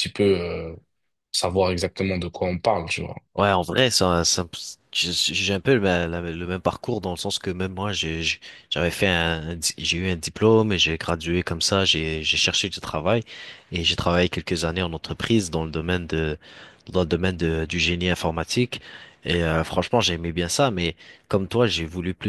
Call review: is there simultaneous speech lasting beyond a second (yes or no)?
no